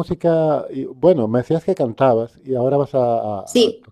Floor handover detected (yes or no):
no